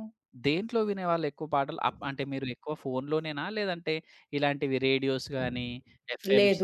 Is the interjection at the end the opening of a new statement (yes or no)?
yes